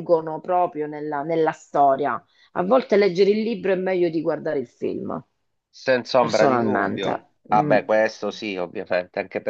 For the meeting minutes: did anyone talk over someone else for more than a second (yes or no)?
yes